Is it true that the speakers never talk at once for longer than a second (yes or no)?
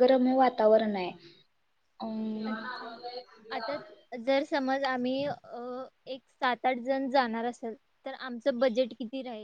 yes